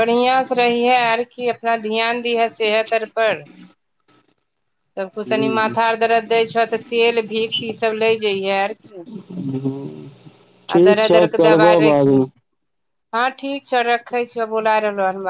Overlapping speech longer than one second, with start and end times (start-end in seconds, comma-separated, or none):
10.7-12.2